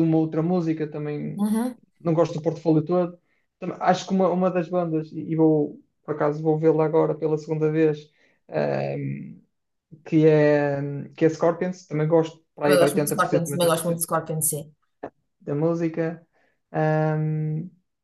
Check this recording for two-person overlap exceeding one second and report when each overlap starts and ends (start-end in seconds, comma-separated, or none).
12.6-14.0